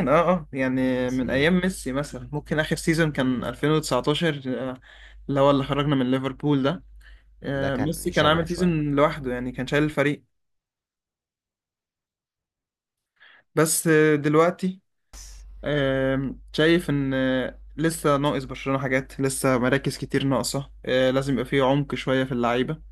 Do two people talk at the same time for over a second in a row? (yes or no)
yes